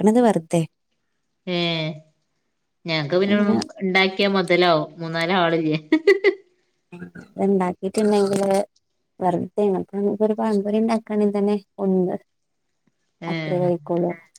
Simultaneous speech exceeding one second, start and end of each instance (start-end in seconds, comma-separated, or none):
none